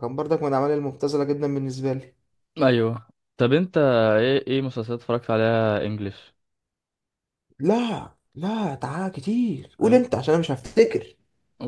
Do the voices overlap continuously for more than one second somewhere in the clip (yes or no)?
no